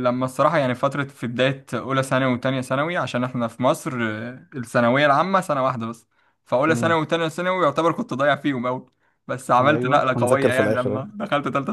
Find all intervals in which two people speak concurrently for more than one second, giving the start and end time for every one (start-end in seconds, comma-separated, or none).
9.6-11.0